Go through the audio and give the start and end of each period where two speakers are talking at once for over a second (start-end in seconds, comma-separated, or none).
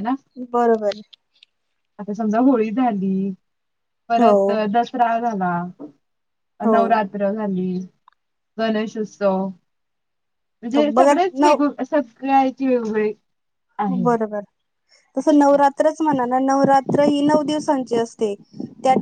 none